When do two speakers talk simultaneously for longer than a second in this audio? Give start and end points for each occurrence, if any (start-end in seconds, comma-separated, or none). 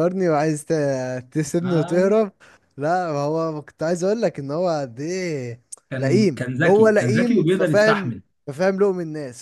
6.0-8.2